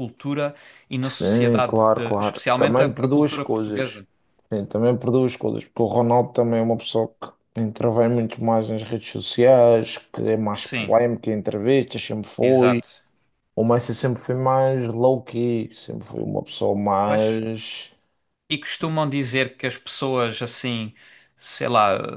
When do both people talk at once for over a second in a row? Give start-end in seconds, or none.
1.0-4.0